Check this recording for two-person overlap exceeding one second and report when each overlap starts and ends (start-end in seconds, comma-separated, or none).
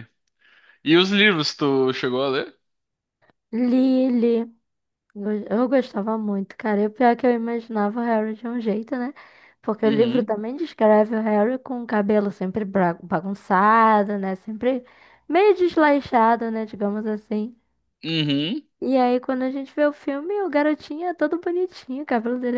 none